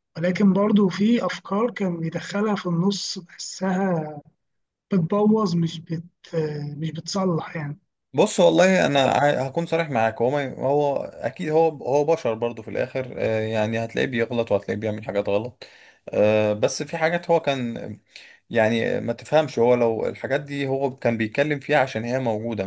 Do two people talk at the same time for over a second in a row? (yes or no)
no